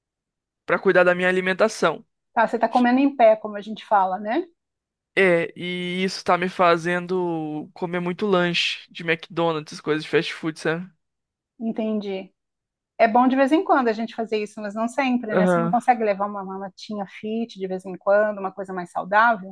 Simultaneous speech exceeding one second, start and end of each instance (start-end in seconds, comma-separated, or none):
none